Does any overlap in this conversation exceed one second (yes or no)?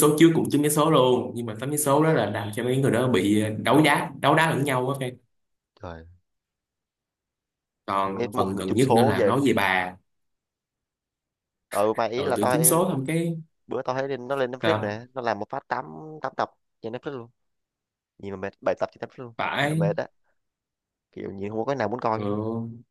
yes